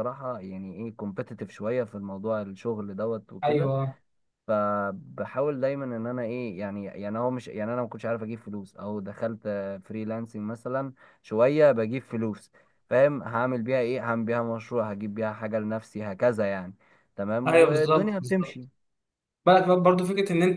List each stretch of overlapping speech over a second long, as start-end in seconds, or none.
17.5-18.7